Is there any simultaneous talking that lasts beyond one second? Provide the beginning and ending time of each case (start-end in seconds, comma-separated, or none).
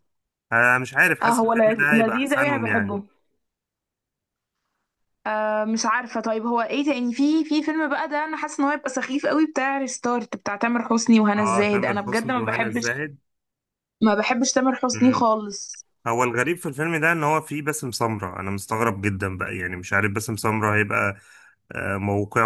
1.2-3.0, 11.4-12.9